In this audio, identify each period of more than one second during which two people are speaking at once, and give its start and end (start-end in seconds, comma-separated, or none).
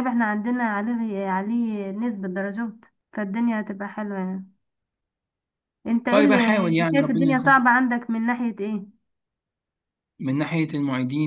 6.1-7.6